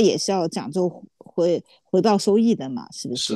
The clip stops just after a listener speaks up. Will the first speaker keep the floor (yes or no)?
no